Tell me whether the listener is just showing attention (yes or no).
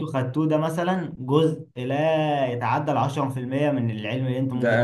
no